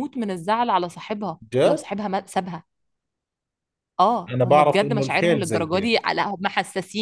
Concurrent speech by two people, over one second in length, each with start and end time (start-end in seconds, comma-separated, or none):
4.3-6.0